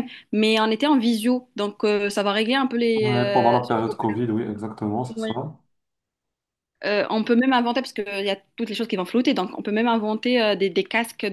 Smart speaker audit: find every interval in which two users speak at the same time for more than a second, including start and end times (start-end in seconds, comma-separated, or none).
3.0-4.2